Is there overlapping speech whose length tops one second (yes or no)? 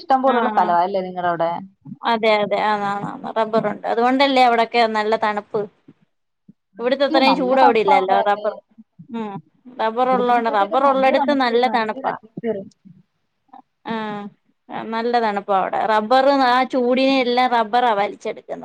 yes